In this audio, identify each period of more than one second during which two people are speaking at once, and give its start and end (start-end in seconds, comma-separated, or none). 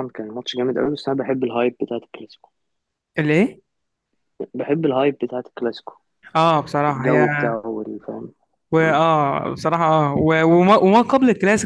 none